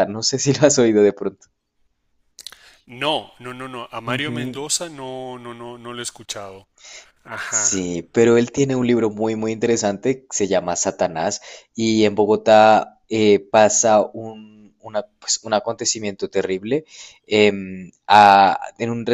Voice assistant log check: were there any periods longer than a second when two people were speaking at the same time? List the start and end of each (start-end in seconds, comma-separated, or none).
none